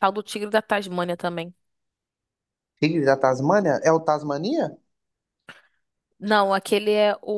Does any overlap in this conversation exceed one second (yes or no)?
no